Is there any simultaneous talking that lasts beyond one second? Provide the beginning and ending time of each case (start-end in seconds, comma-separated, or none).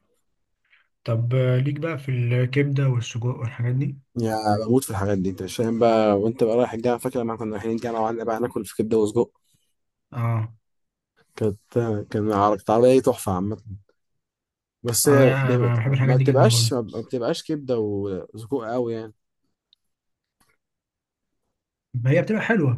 15.1-16.7